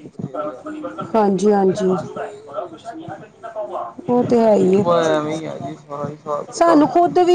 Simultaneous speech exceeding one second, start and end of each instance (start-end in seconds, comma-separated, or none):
none